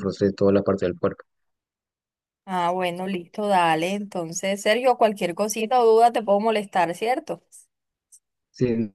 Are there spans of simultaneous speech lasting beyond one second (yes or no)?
no